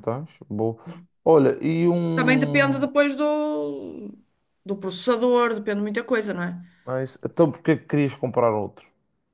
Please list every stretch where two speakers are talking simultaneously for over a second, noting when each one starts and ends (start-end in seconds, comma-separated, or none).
none